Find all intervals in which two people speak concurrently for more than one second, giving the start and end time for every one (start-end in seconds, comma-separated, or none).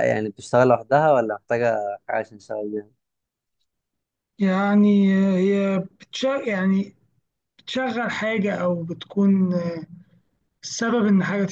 none